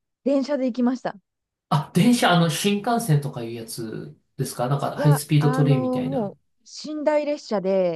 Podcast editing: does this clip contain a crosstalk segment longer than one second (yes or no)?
yes